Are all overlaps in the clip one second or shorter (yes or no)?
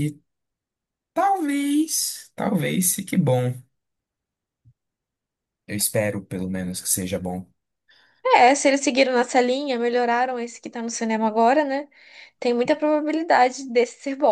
yes